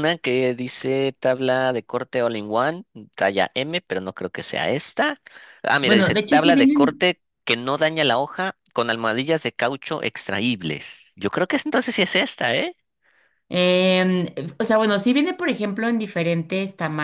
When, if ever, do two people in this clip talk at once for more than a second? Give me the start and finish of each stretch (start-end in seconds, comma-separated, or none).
5.8-7.1